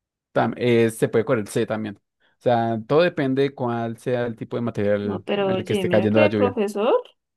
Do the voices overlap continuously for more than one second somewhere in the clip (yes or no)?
yes